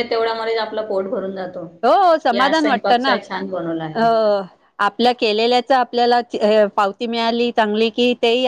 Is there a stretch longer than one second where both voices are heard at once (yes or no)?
yes